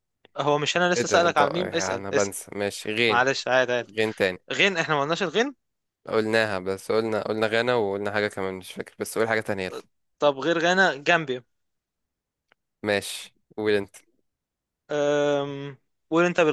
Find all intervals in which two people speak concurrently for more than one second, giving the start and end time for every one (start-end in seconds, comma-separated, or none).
1.0-2.3